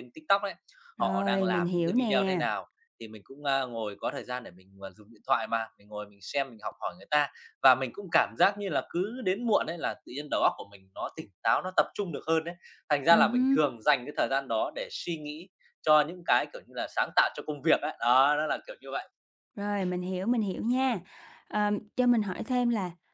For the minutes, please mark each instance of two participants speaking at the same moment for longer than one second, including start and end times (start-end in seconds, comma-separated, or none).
1.0-2.4